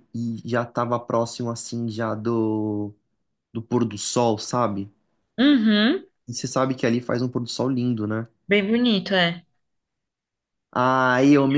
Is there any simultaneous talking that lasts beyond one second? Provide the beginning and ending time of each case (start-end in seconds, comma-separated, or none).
none